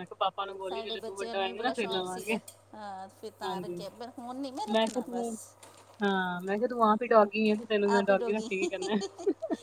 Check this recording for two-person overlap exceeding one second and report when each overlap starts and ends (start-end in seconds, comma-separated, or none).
0.7-2.4